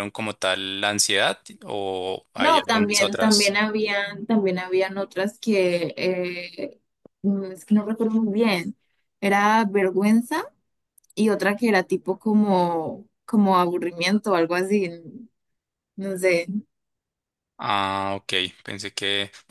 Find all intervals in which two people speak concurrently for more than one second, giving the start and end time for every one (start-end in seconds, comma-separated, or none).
2.3-3.5